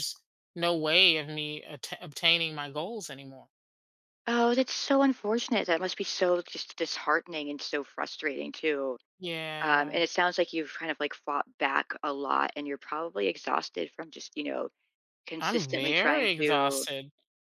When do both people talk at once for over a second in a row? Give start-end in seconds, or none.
15.4-16.8